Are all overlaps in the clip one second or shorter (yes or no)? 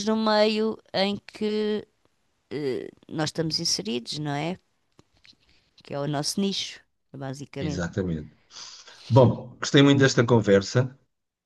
yes